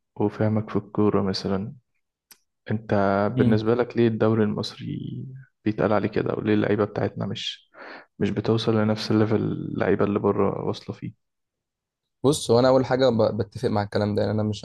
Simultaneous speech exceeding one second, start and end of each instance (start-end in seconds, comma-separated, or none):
none